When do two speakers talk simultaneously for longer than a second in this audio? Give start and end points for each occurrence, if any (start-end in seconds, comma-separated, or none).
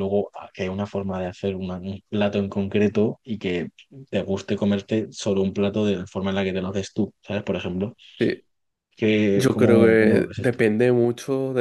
9.3-10.6